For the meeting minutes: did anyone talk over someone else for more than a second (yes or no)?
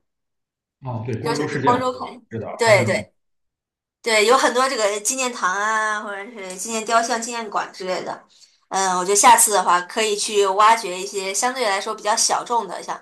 yes